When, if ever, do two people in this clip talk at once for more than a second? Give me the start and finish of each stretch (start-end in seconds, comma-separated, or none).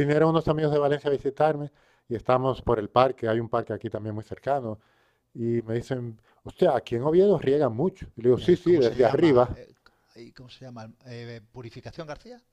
8.4-9.6